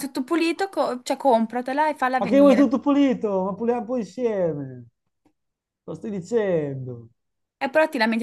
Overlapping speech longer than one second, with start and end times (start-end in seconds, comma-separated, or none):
none